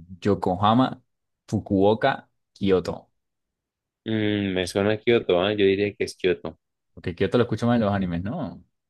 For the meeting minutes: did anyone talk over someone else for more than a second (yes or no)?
no